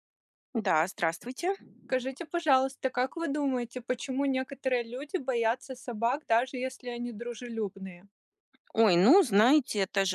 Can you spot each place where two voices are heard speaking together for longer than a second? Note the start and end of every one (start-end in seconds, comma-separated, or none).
none